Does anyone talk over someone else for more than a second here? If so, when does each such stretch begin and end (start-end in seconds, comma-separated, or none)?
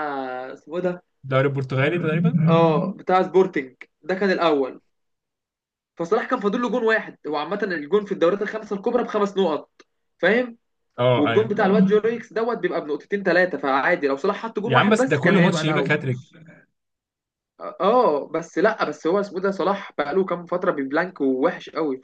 14.6-16.0